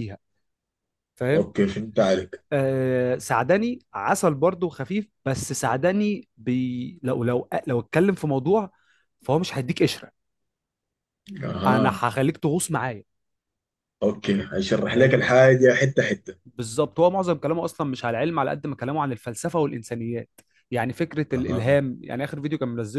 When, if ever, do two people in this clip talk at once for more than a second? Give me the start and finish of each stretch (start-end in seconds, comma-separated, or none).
none